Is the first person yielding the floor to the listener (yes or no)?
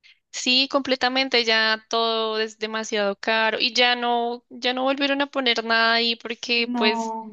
no